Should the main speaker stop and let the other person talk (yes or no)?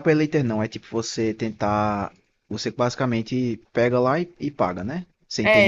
yes